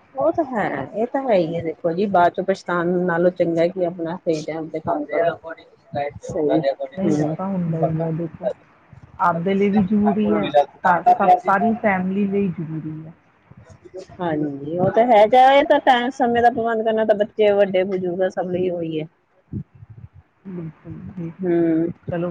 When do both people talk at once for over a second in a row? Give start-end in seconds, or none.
none